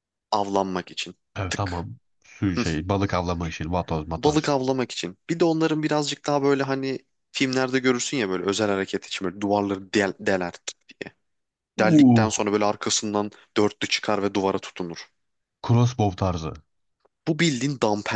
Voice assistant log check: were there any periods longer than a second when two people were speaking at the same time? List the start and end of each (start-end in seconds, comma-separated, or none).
none